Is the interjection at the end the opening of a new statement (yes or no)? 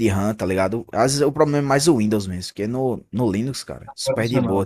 no